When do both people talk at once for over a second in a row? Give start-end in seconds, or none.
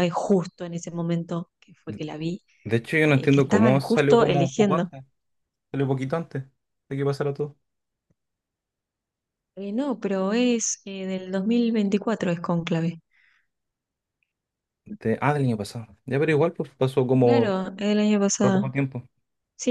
3.1-4.9